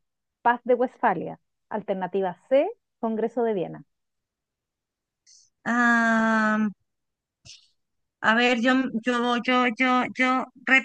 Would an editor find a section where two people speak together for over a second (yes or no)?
no